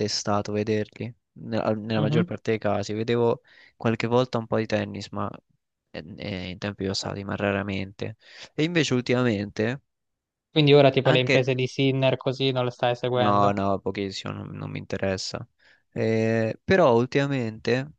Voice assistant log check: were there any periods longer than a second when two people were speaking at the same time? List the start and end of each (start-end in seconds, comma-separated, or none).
none